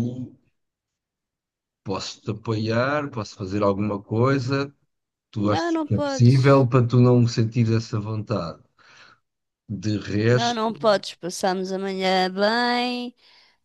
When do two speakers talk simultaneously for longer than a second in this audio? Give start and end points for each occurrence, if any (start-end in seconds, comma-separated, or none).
5.3-6.7